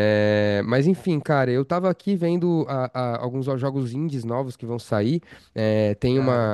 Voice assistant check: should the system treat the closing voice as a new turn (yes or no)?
no